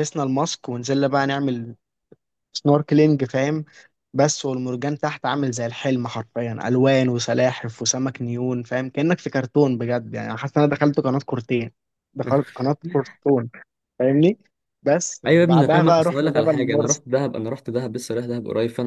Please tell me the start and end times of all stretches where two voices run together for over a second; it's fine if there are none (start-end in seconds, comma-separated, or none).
15.3-17.0